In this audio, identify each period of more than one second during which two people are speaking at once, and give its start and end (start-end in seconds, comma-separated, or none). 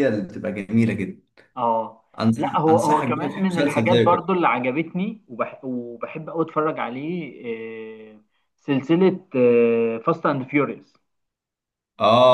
2.2-4.0